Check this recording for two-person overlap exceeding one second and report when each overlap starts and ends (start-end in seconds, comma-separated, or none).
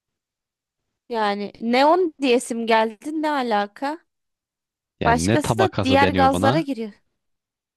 5.0-6.7